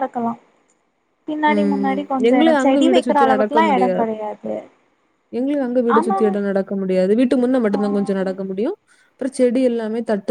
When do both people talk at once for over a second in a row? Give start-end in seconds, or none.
1.5-4.1